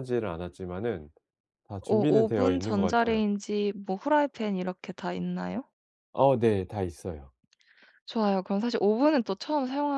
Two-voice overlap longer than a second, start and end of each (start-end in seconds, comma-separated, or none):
1.9-3.2